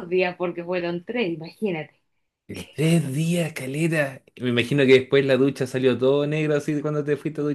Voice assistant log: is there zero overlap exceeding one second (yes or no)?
yes